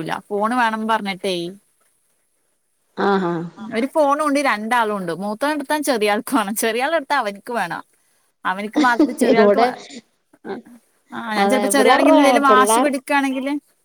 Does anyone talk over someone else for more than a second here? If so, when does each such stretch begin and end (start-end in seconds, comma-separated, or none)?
11.4-13.0